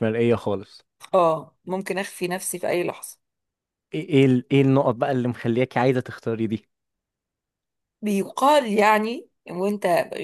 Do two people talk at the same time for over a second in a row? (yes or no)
no